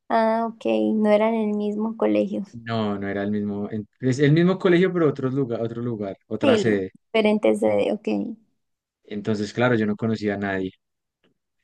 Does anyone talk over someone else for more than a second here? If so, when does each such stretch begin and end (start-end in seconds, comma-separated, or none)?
none